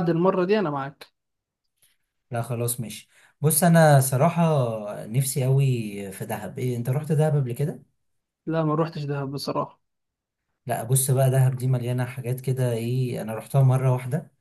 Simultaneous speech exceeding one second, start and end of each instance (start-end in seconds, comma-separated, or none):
none